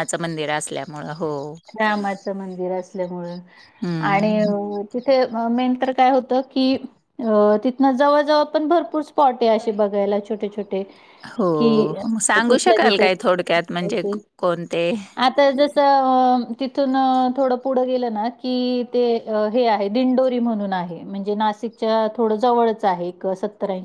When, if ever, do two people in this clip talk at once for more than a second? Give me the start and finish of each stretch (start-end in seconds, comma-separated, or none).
12.5-14.1